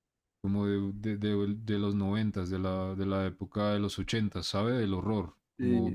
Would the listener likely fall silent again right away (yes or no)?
yes